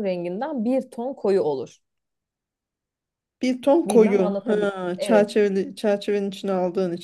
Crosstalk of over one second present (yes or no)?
yes